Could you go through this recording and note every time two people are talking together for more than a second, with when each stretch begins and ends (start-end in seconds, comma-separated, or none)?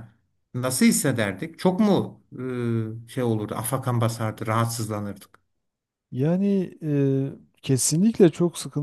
none